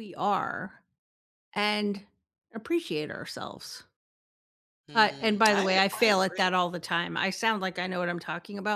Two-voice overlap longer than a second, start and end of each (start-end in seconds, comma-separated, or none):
4.9-6.5